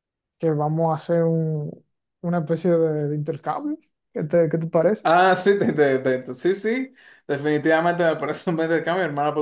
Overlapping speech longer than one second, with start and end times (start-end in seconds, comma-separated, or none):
none